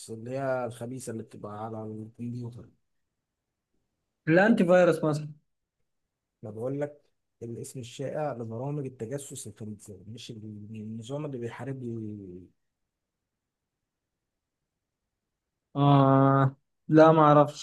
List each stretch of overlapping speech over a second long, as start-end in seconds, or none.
none